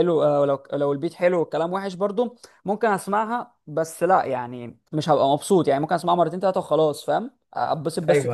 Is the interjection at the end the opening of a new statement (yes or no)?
no